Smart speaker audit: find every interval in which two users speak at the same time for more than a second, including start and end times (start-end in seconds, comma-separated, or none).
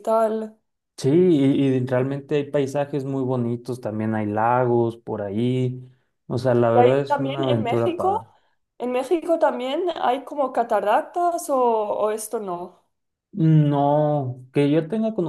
6.7-8.2